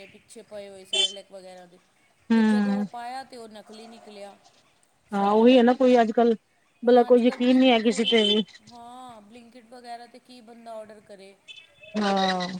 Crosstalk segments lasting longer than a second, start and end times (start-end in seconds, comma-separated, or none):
6.8-8.2